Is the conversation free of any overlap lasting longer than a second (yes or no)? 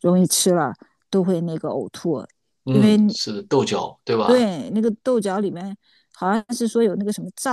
yes